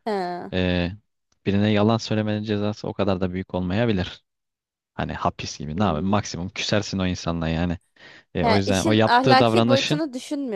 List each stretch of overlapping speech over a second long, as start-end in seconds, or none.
8.4-10.0